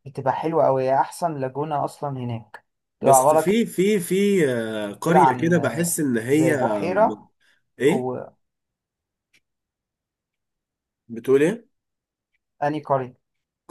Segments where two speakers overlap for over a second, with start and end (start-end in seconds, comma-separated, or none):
none